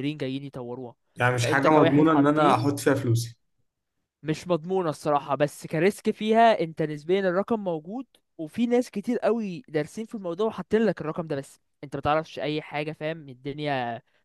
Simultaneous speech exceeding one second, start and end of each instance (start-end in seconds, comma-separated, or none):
1.4-2.6